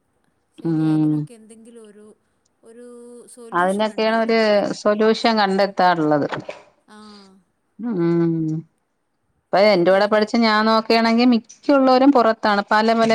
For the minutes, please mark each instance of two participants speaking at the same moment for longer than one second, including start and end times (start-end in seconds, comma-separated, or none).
none